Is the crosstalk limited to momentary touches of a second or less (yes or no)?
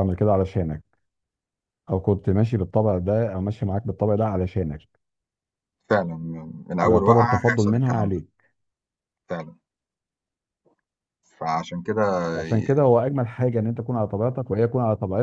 no